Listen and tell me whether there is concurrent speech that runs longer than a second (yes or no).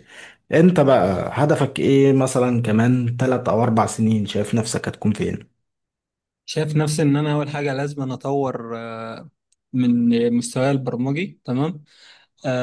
no